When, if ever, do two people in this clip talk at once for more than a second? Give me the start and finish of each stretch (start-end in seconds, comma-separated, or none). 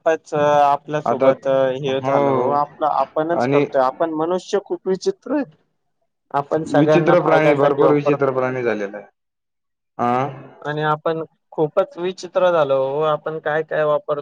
6.8-8.3